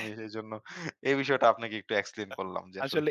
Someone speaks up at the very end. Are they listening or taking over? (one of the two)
taking over